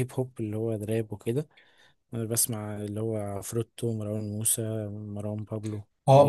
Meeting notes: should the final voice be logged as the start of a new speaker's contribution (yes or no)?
yes